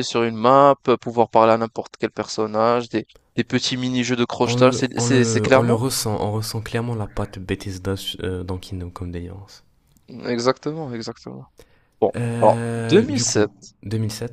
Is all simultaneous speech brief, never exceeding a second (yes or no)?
no